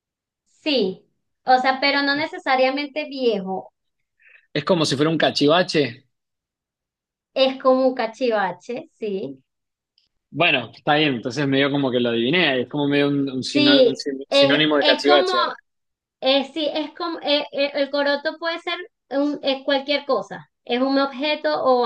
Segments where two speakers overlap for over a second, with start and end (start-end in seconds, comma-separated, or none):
13.5-15.3